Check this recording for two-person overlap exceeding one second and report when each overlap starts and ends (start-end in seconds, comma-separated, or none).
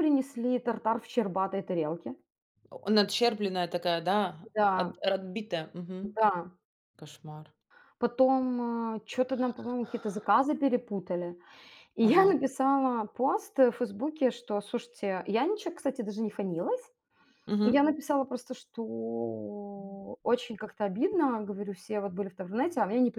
none